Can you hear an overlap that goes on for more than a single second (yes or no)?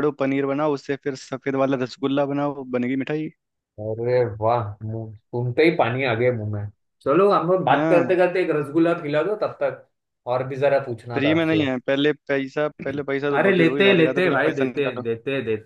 yes